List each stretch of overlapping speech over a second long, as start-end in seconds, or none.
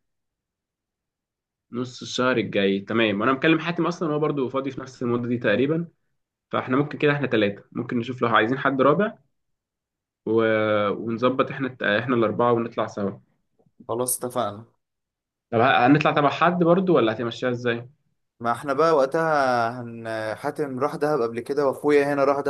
none